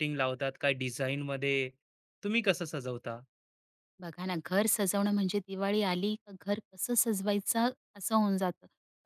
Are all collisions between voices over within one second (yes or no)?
yes